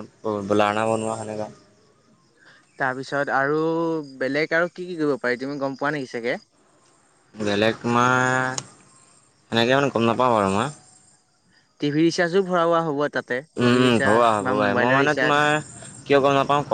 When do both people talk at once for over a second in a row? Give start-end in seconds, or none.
13.6-15.4